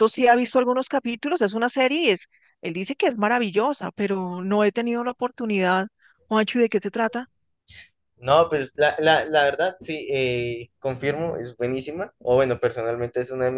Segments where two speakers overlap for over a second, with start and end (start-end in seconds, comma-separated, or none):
none